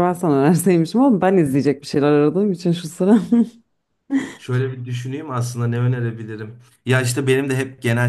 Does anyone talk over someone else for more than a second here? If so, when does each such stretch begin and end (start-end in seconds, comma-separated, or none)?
none